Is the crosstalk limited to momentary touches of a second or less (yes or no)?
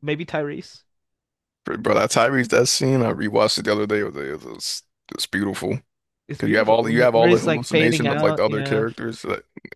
no